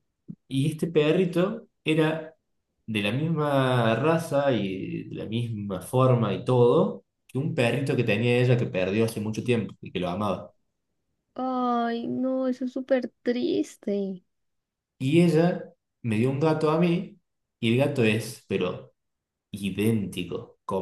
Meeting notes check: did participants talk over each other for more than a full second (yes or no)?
no